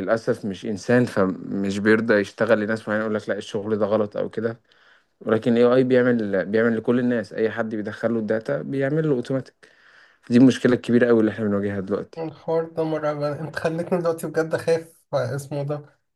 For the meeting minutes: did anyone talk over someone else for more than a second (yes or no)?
no